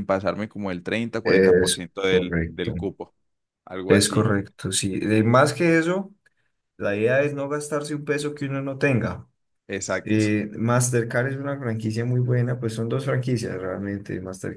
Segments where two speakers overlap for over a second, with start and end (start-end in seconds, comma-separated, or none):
1.2-2.8